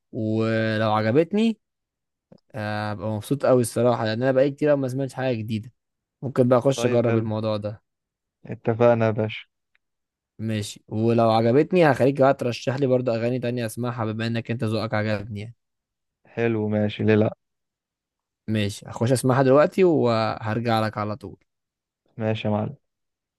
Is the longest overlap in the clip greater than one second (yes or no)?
no